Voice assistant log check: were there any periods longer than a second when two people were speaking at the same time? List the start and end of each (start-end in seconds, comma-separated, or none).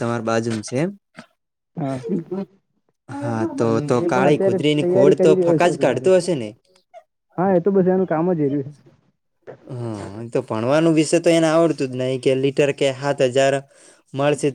4.0-6.1